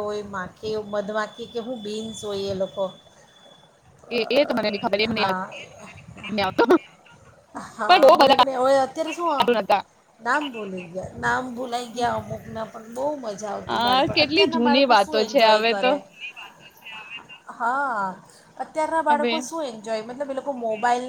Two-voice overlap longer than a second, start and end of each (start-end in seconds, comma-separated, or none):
13.7-15.9